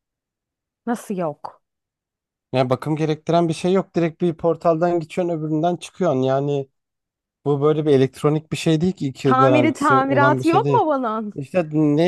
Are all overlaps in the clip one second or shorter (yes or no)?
no